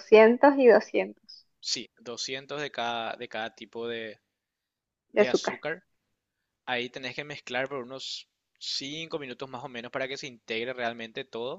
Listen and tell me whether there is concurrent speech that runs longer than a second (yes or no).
no